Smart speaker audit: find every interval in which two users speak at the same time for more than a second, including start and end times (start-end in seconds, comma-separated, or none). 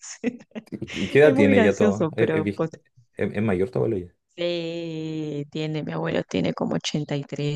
1.2-2.7